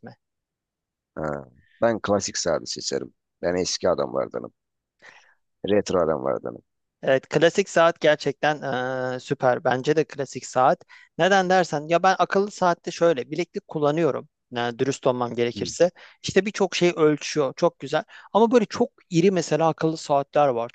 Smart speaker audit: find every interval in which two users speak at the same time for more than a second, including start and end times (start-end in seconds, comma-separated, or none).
none